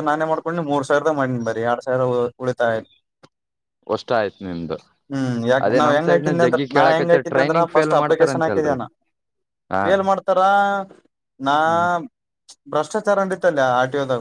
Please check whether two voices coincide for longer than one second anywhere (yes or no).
yes